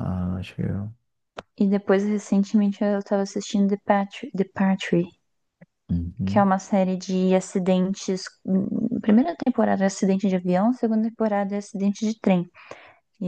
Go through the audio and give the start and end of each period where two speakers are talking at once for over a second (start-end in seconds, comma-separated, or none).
none